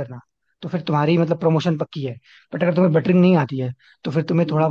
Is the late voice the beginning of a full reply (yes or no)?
no